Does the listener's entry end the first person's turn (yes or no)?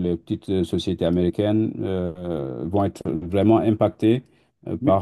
yes